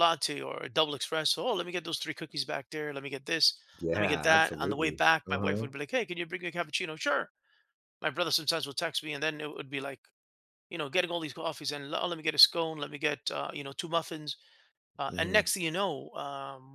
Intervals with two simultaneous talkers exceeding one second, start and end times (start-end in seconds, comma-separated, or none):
4.0-5.7